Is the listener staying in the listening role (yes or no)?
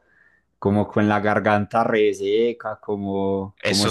yes